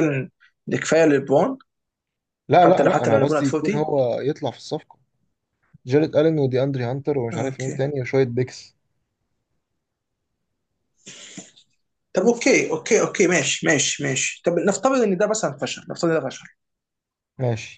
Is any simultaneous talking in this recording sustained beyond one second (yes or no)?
yes